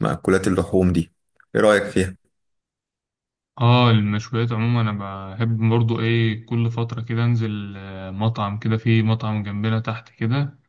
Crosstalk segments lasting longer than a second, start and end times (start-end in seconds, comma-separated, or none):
none